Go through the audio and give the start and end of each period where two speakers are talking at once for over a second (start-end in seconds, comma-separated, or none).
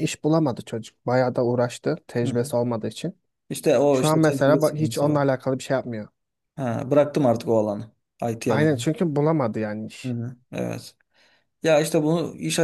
3.9-5.2